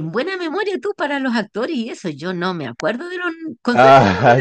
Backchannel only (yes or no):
no